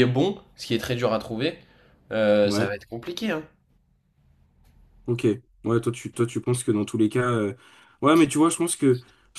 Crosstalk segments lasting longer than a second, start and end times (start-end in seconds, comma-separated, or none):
none